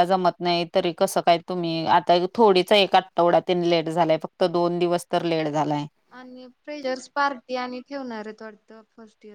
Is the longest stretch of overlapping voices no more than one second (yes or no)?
yes